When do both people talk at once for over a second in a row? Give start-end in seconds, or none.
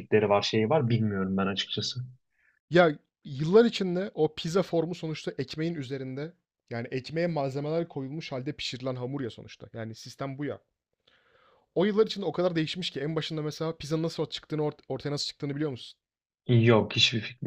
none